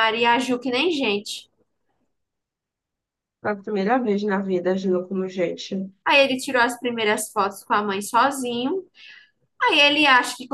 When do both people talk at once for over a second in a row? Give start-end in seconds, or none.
none